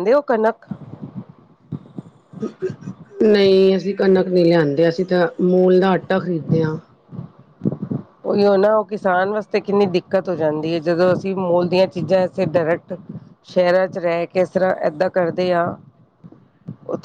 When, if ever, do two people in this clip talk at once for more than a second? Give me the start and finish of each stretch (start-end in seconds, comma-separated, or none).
none